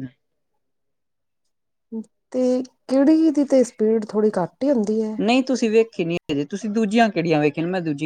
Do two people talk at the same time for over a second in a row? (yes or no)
no